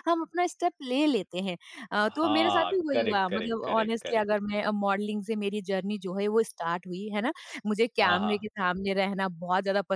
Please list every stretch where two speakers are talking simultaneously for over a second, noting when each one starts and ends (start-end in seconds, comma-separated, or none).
2.1-4.4